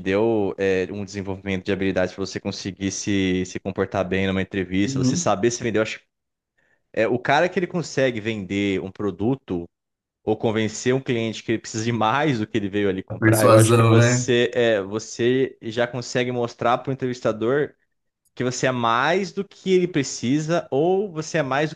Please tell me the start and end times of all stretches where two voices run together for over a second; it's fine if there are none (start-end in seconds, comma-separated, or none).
13.1-14.3